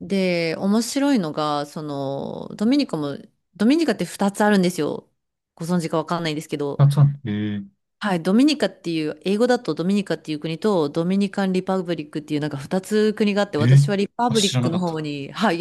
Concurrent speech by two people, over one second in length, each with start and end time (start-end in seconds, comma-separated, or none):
13.6-15.0